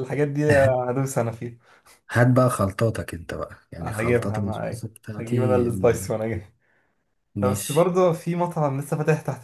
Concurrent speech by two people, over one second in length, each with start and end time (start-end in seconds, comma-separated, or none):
3.8-5.6